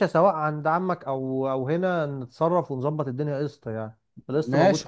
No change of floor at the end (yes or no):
no